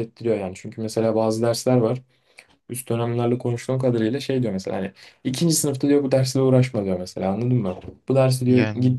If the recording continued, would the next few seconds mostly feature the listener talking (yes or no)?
no